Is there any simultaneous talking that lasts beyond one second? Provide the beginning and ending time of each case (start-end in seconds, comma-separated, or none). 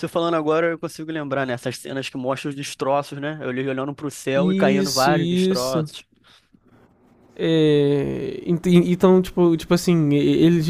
4.3-5.9